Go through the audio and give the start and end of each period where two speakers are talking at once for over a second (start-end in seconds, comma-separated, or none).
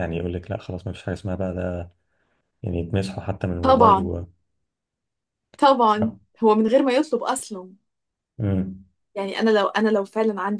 none